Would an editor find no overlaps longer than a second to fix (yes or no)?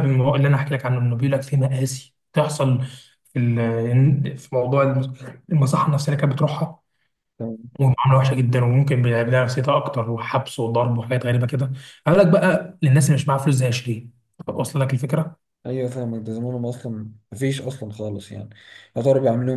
yes